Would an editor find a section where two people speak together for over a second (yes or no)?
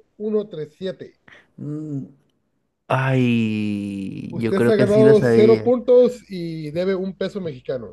yes